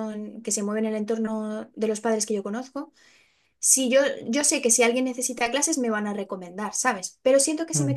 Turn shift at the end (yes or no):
no